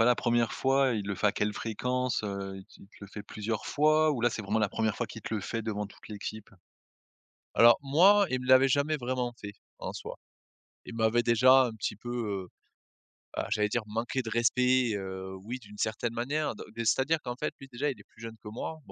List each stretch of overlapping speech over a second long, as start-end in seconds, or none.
none